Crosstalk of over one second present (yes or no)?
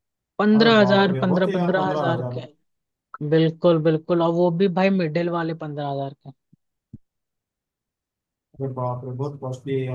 yes